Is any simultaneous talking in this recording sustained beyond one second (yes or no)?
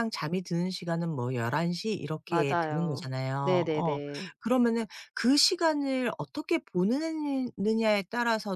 yes